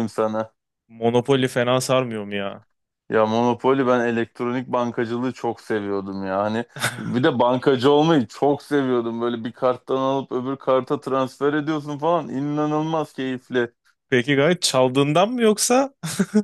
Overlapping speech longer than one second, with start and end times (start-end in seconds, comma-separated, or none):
none